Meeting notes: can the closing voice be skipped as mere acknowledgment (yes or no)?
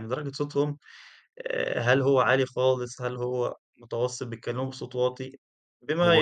yes